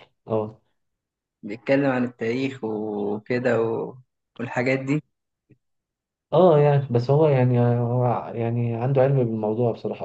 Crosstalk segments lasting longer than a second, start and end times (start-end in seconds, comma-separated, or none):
none